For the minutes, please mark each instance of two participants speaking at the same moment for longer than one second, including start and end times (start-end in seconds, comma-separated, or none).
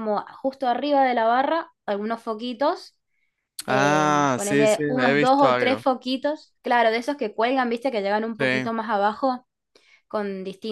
3.7-5.8